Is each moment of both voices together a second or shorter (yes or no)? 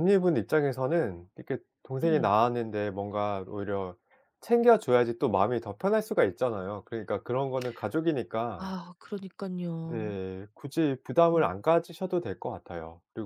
yes